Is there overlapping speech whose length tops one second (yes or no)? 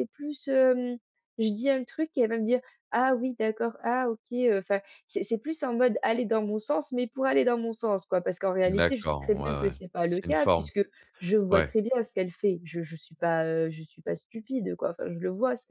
yes